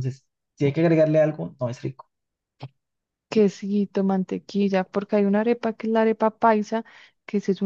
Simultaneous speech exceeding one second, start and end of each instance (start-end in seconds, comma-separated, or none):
none